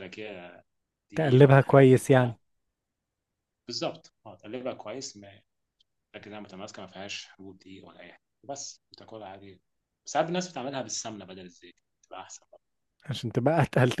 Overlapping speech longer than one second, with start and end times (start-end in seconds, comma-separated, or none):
1.1-2.3